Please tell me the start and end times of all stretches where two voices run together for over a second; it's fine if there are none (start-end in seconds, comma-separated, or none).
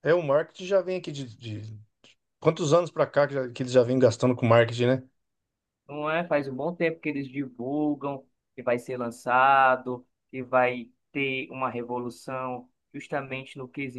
none